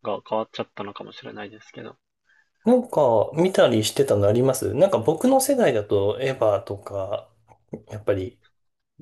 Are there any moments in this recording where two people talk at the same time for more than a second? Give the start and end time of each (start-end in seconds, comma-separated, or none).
none